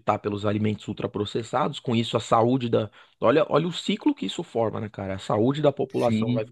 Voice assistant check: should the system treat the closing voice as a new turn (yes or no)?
no